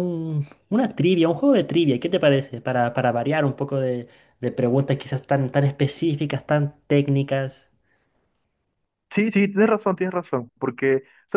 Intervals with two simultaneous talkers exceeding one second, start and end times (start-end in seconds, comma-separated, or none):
none